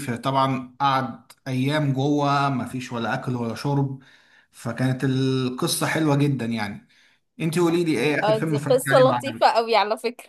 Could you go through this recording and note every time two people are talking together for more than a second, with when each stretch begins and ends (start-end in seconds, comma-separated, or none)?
8.2-9.6